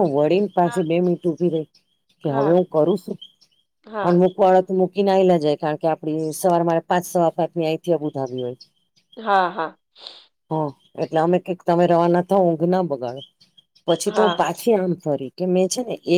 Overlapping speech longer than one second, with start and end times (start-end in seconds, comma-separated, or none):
none